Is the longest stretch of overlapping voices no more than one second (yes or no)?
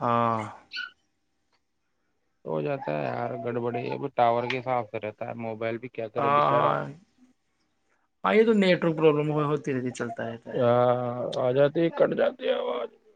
yes